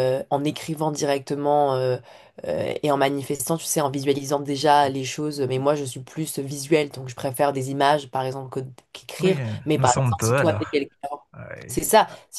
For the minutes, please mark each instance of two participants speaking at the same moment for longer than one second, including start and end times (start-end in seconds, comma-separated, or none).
9.2-10.8